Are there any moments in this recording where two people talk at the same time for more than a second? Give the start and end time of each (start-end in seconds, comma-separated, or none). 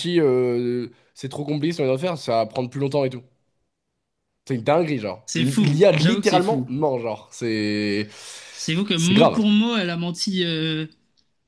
5.3-6.7